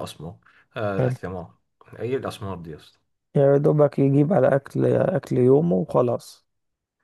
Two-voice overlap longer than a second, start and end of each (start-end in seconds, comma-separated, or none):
none